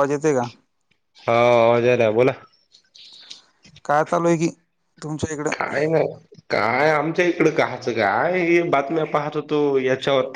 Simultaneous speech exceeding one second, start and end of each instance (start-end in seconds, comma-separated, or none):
none